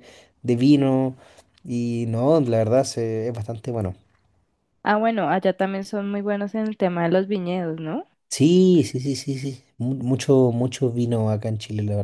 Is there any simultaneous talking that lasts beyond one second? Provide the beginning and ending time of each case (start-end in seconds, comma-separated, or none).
none